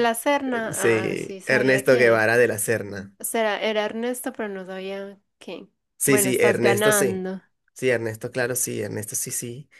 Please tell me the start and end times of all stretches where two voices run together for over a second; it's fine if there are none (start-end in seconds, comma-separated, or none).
0.7-2.2, 6.0-7.2